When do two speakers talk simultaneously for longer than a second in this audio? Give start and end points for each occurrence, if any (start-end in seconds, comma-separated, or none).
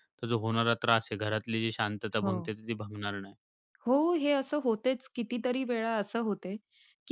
none